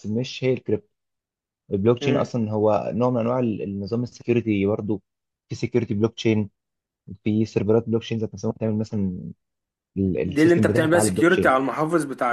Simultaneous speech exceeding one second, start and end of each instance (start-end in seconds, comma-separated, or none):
10.1-11.5